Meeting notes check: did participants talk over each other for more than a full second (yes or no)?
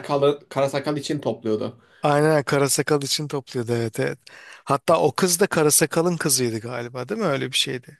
no